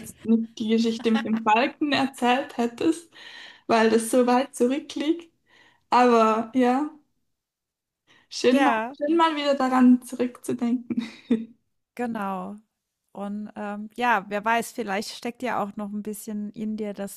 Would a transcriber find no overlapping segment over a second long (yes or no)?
yes